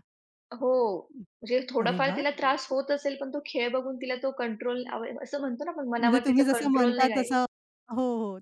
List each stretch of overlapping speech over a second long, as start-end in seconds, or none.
6.0-7.4